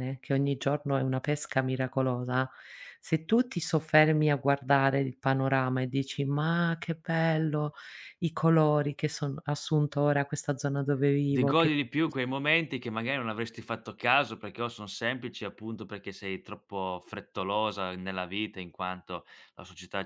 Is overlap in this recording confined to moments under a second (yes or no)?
yes